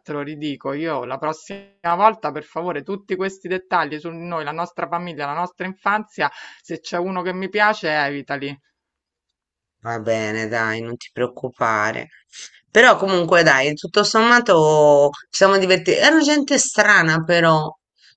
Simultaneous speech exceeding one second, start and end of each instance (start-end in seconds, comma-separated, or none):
none